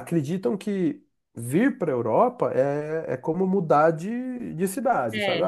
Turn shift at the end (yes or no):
no